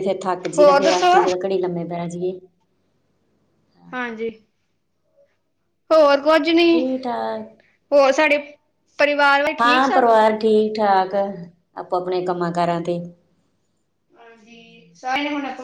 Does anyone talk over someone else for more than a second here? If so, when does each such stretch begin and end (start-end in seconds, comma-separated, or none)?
none